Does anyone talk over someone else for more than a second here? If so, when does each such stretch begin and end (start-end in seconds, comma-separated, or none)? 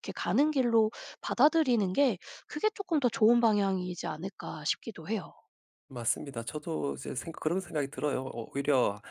none